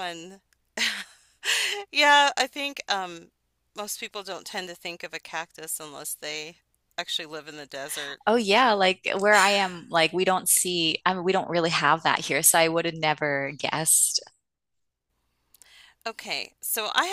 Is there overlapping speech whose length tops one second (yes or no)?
no